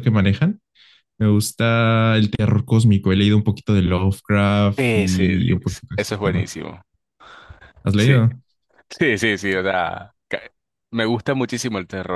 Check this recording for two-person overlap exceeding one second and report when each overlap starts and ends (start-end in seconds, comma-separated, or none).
4.8-6.5